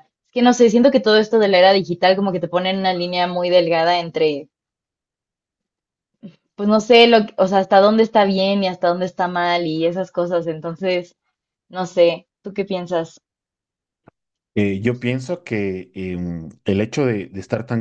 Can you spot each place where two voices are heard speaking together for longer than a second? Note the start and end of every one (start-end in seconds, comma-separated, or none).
none